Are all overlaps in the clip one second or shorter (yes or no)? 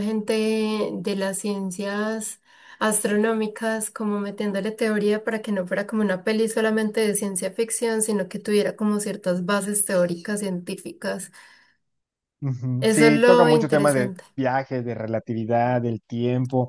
no